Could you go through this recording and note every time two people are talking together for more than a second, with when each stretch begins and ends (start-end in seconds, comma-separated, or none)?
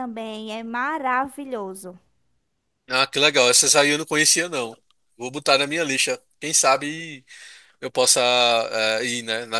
none